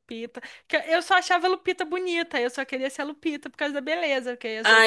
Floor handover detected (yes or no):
no